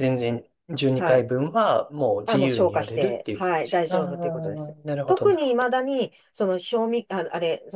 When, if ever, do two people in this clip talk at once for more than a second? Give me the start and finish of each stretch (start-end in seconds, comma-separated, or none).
2.2-5.7